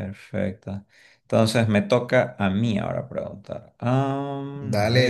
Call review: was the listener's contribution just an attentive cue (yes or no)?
no